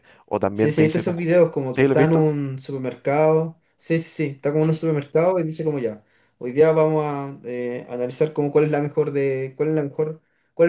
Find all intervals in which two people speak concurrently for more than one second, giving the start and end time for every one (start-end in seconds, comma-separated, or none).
0.5-2.3